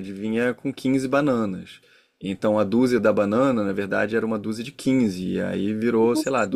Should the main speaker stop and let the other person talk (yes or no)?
no